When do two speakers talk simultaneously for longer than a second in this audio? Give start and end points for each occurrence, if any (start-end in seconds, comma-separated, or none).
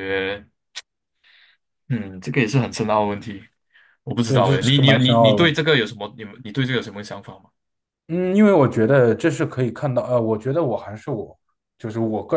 4.3-5.6